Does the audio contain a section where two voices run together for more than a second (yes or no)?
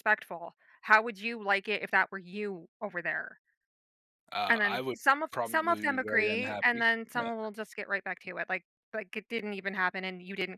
yes